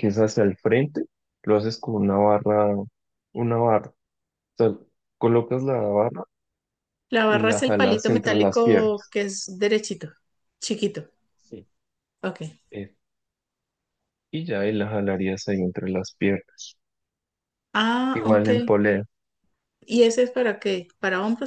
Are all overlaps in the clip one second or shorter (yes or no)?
no